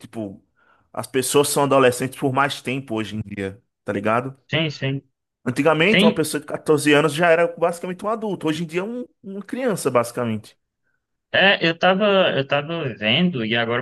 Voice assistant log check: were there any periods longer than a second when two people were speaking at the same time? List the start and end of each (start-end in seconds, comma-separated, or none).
none